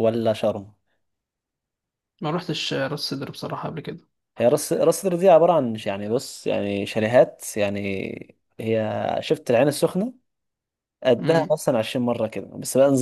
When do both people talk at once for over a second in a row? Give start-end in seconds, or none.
none